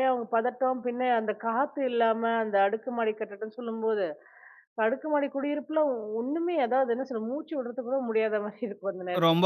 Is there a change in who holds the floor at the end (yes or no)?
yes